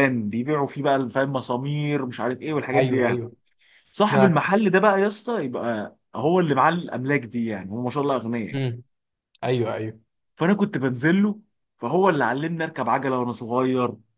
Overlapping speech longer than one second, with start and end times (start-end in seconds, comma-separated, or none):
none